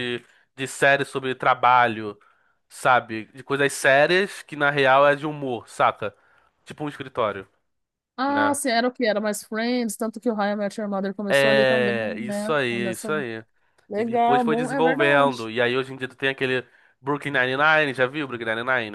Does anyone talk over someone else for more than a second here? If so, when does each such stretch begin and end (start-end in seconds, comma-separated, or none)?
11.3-13.1, 14.0-15.5